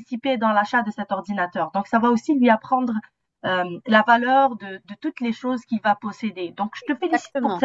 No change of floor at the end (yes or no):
yes